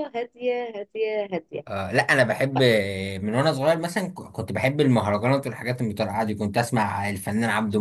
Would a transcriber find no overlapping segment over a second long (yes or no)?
yes